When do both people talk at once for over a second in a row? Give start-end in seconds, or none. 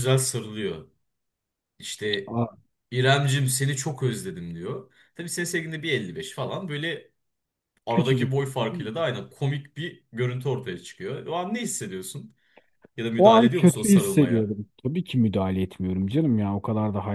13.2-14.6